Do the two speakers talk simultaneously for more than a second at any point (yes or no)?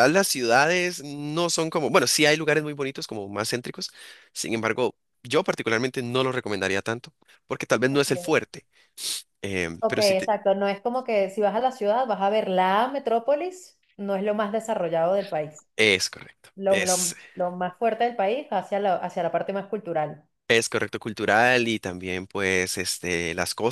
no